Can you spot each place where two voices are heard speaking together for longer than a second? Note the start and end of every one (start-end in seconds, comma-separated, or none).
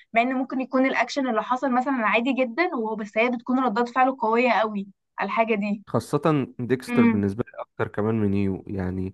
none